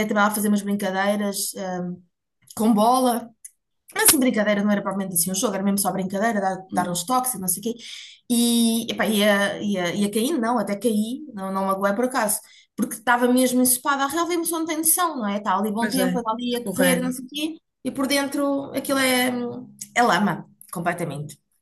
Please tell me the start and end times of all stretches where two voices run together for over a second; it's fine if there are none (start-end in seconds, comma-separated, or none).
15.8-17.1